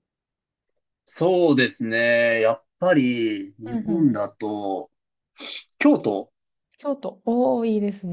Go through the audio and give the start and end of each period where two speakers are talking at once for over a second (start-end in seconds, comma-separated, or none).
none